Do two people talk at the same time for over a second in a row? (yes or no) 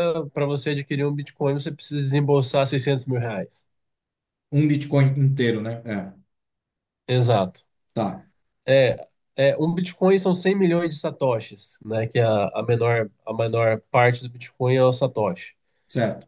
no